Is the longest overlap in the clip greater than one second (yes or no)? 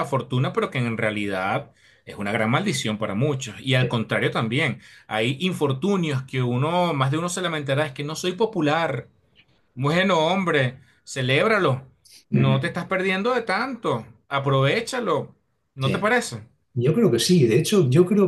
no